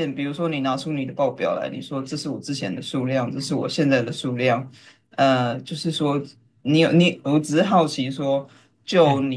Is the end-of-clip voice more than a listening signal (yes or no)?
no